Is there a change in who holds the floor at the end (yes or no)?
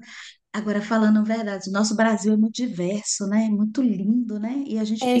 yes